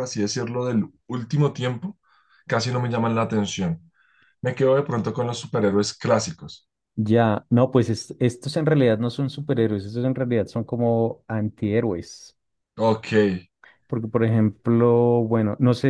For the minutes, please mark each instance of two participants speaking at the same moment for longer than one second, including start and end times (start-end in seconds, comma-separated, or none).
none